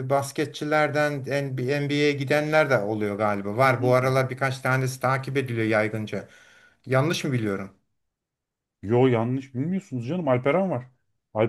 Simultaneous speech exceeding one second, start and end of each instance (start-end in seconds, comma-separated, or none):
none